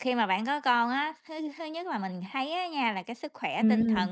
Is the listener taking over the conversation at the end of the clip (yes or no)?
no